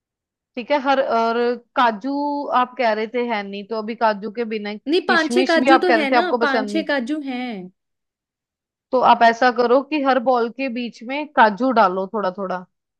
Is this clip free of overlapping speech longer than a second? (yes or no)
no